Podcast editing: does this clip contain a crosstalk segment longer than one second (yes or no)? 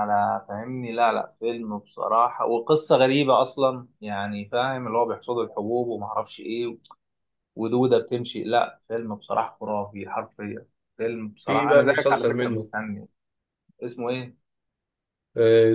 yes